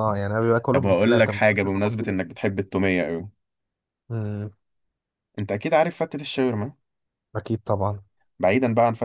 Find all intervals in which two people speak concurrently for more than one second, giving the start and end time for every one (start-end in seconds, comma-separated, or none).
0.7-2.2